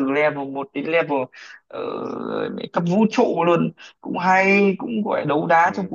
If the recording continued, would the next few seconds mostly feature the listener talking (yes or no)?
no